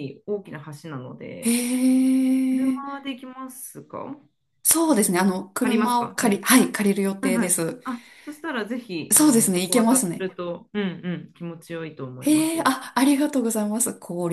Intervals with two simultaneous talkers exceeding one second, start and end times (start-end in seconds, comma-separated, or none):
4.8-6.4, 9.1-10.4